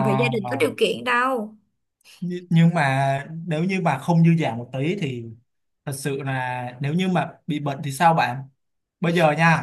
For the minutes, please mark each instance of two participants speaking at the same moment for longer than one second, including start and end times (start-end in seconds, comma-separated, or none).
none